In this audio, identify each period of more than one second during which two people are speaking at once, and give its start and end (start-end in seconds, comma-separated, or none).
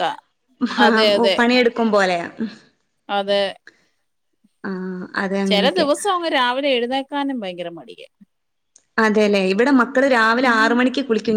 none